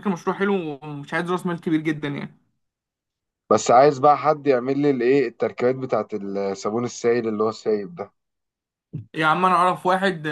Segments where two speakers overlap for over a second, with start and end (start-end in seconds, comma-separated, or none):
none